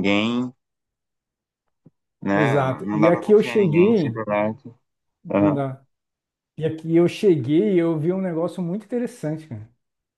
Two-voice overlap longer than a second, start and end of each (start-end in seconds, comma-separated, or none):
2.3-4.2